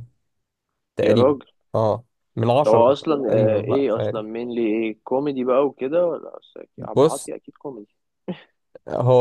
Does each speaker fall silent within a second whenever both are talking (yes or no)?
no